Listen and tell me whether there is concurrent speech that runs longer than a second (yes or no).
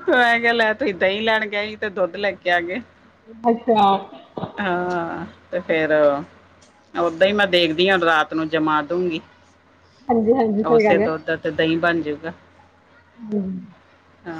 no